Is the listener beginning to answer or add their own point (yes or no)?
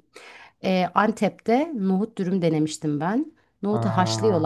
no